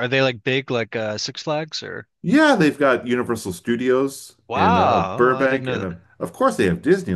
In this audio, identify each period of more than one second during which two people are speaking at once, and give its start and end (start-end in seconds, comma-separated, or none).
4.5-5.9